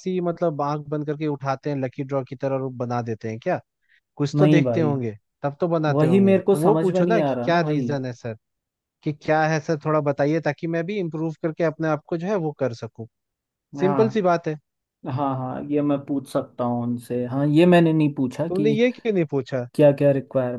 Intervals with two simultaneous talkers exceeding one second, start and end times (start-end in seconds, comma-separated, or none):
5.9-7.9